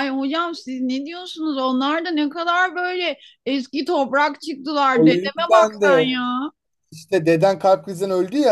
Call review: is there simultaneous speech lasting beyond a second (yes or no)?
yes